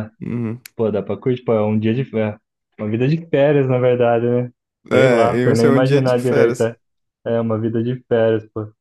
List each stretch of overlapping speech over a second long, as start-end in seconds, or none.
4.9-6.7